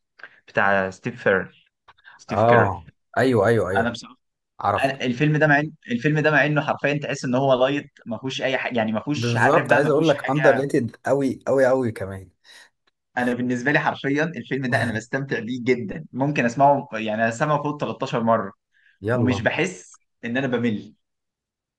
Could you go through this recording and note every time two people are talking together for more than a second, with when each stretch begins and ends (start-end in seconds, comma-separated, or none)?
9.2-10.6